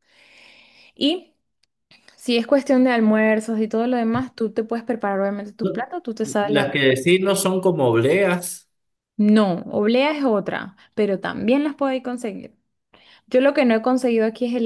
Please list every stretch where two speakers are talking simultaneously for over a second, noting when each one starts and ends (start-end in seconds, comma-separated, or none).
none